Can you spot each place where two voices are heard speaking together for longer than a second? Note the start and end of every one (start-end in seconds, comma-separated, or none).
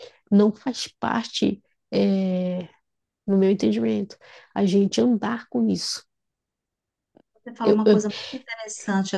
none